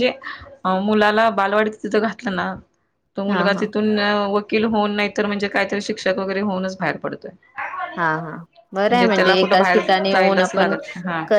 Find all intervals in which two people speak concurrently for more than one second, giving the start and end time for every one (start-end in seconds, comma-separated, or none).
9.2-10.7